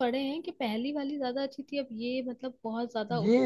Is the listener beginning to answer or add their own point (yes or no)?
yes